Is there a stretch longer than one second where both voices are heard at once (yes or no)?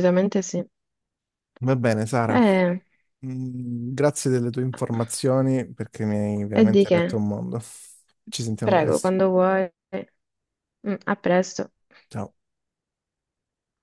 no